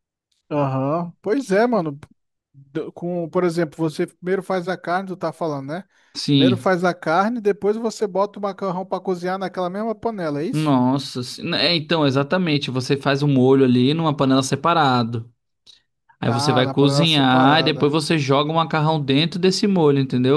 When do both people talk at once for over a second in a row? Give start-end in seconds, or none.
16.3-17.9